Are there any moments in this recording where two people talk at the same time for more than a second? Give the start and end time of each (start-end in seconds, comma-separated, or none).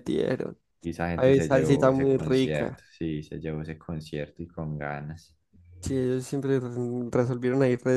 1.1-2.8